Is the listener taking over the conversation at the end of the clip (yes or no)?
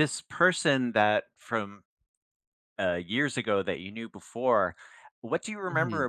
no